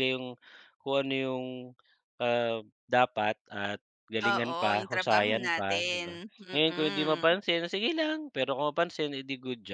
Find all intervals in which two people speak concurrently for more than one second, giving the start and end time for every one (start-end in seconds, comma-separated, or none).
4.3-7.2